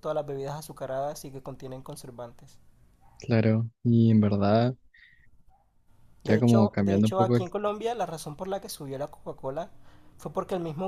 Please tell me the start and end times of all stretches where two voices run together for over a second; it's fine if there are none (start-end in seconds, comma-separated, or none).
6.2-7.5